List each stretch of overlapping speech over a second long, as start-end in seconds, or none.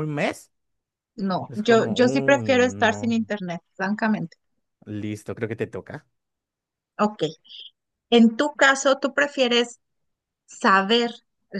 1.5-3.2